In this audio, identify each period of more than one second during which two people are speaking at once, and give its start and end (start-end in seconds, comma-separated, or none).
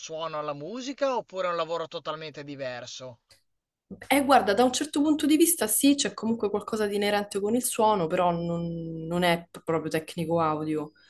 none